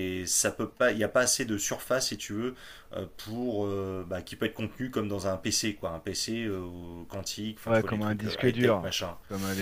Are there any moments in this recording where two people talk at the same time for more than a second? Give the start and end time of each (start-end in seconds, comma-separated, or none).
7.7-8.9